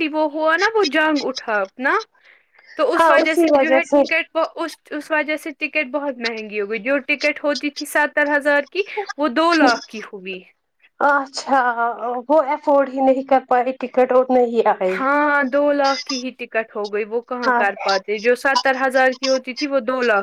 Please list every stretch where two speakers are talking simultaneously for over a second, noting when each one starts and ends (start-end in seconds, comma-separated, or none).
none